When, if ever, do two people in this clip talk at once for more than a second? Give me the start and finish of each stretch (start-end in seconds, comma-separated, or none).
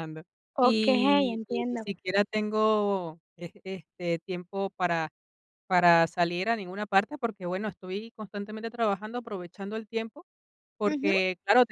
0.7-1.9